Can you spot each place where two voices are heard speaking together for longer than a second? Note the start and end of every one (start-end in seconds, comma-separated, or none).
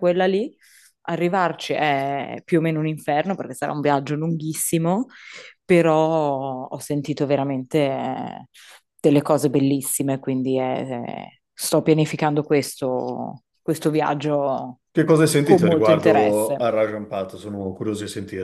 15.4-16.7